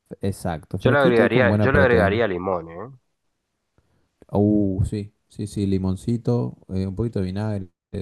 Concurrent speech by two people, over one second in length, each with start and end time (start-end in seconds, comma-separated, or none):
0.8-2.2